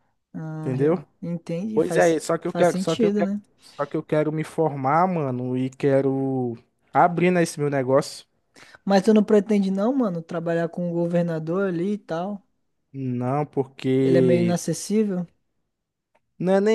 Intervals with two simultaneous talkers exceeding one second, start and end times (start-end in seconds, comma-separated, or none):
1.7-3.4